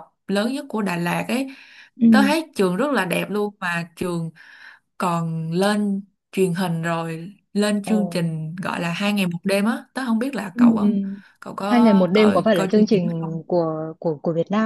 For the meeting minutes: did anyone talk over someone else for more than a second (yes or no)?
yes